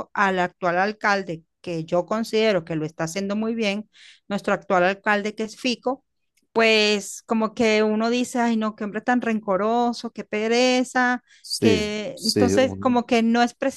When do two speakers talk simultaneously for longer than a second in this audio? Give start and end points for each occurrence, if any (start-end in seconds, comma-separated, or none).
11.6-13.0